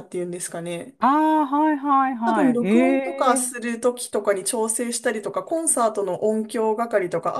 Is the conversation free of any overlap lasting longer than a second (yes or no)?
no